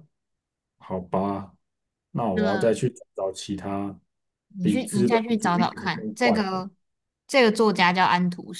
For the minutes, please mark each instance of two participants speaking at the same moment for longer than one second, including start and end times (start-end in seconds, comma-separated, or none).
4.6-6.6